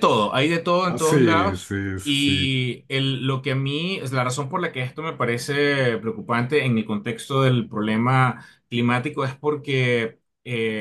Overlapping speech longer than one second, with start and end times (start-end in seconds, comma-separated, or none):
0.8-2.5